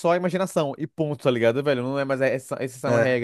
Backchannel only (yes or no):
yes